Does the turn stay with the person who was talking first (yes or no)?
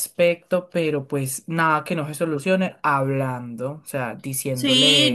no